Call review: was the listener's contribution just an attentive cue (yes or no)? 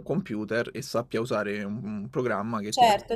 no